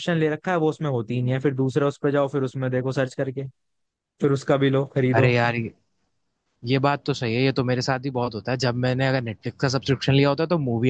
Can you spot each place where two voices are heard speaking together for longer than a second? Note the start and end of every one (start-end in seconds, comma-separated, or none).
none